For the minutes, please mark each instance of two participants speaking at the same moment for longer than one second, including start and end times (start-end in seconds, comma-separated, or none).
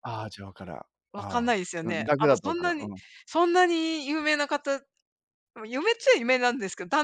1.1-2.9